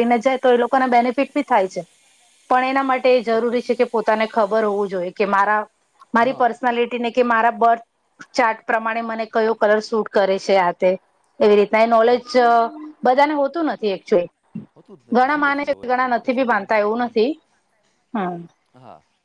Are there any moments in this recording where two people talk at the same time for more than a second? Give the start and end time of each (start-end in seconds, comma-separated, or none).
15.1-17.1